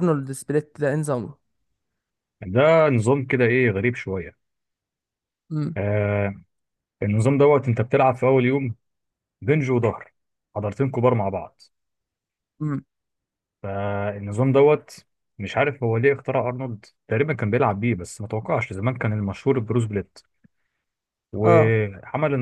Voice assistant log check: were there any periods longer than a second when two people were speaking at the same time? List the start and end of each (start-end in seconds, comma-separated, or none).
none